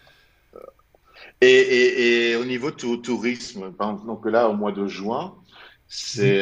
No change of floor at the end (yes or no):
yes